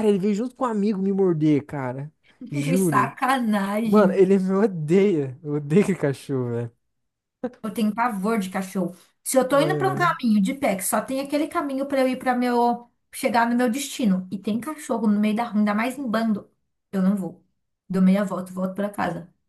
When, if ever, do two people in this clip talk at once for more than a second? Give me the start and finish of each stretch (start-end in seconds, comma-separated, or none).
none